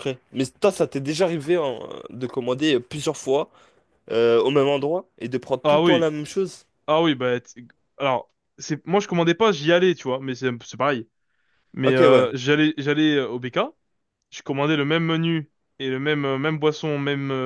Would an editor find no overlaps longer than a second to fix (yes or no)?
yes